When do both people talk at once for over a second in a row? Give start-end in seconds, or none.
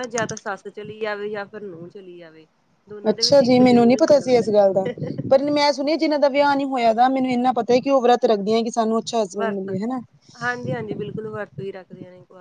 3.1-4.8